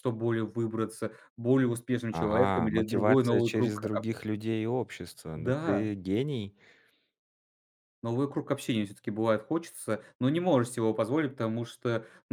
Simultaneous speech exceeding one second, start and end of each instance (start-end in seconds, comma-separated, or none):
2.1-3.9